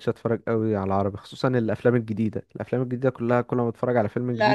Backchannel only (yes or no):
no